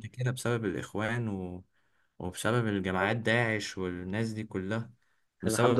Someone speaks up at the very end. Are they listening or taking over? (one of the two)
taking over